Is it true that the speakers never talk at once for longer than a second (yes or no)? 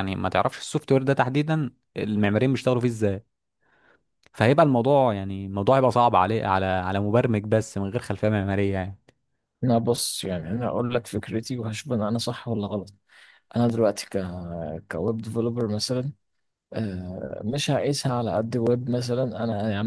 yes